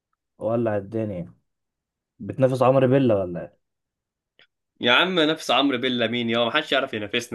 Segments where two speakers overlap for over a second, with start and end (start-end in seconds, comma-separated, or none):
none